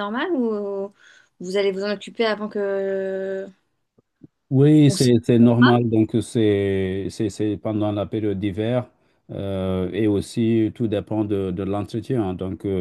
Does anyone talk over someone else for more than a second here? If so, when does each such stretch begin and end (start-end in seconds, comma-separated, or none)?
none